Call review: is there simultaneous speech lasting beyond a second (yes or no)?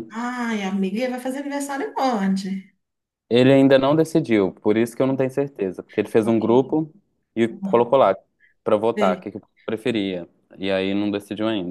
no